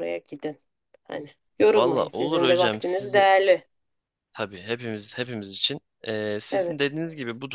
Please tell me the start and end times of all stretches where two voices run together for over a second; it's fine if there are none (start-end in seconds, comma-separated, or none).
1.7-3.2